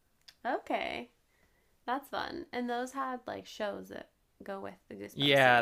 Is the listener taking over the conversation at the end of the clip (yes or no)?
yes